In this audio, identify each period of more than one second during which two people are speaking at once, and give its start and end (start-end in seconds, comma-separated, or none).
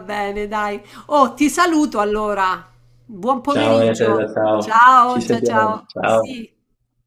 3.5-6.4